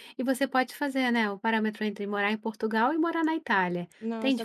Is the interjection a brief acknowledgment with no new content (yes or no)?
no